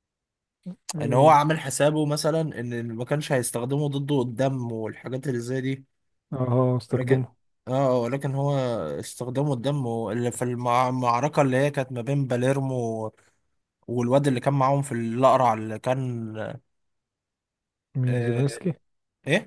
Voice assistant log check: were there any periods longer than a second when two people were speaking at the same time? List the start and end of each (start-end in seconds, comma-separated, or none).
none